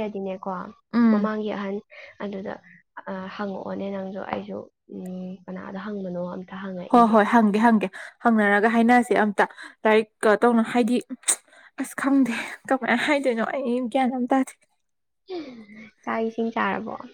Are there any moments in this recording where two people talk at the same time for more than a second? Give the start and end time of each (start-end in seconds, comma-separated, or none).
none